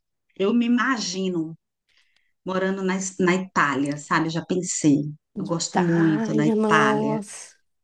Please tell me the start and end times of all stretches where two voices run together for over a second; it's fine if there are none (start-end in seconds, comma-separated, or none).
5.5-7.2